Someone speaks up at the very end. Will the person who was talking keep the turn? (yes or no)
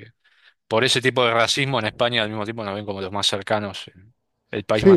no